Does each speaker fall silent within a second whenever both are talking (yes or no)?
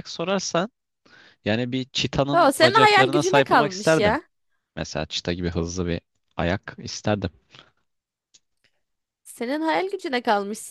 no